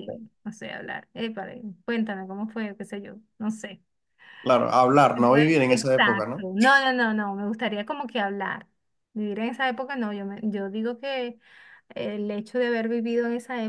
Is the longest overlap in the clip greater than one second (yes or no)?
yes